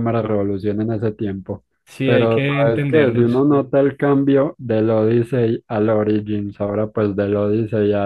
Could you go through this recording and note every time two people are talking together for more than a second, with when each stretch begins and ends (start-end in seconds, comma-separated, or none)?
2.0-3.4